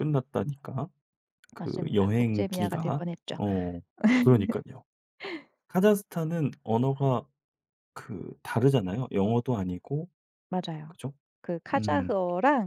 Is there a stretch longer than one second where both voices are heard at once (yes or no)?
yes